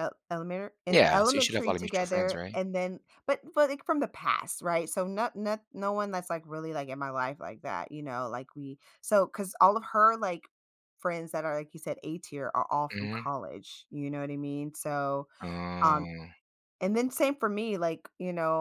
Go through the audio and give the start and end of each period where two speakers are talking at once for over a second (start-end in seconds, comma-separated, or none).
1.1-2.6